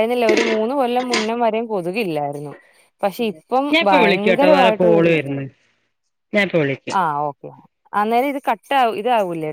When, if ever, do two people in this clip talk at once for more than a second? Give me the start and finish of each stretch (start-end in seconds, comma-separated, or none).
3.7-5.1